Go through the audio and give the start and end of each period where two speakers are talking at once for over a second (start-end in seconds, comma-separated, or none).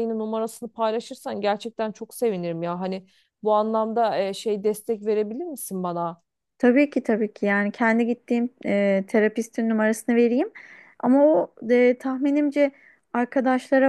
none